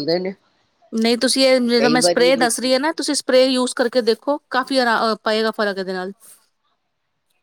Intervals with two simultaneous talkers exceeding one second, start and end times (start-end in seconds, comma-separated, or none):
1.8-3.1